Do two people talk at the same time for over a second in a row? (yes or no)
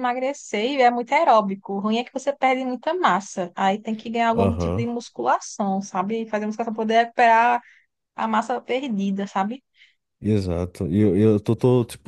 no